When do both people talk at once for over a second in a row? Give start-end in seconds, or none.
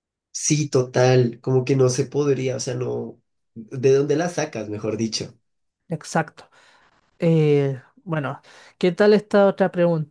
none